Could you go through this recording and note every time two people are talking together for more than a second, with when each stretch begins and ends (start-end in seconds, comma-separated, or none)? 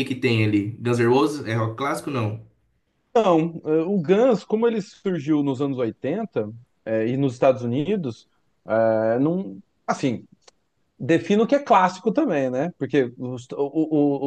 none